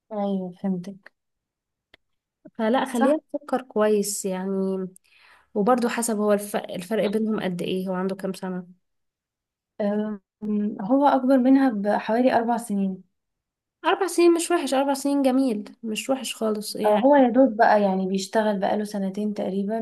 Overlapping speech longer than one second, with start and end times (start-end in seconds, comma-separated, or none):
none